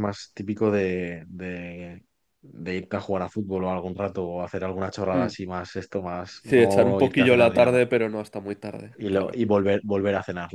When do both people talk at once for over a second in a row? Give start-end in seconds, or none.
6.4-7.8